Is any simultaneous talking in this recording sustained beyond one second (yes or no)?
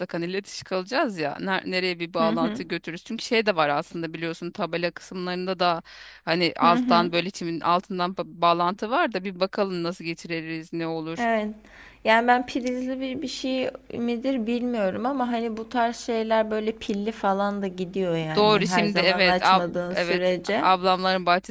yes